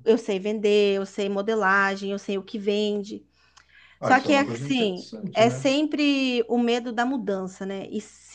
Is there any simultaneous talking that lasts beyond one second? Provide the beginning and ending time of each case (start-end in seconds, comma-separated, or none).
4.0-5.7